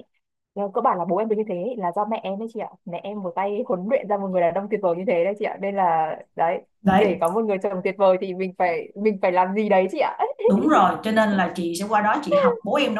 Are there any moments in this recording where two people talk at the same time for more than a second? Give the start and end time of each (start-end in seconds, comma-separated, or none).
none